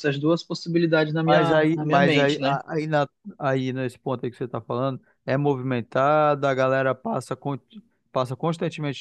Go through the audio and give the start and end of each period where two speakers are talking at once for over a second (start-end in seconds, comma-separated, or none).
1.2-2.6